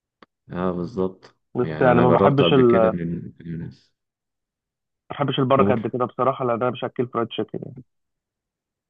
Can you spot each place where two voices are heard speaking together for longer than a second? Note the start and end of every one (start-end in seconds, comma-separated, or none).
1.6-3.0